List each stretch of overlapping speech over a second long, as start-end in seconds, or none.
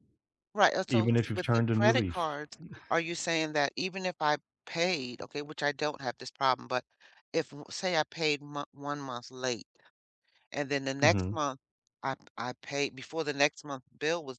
0.9-2.2